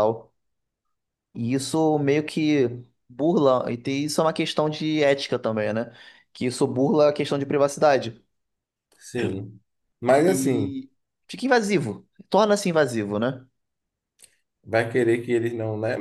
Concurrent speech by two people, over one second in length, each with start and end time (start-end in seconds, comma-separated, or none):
none